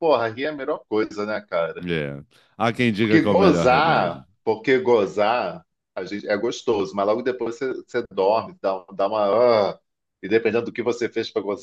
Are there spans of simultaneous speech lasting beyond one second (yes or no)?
yes